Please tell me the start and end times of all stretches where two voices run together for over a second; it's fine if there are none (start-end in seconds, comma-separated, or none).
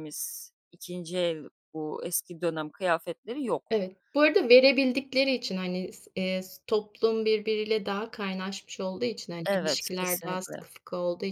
9.4-10.7